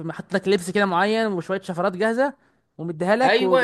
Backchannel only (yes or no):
no